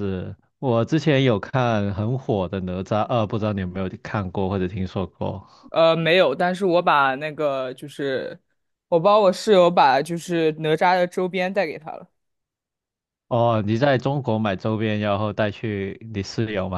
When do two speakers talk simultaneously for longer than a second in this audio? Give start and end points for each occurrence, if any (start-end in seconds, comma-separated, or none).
none